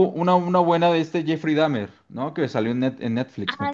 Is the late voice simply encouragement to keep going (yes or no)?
no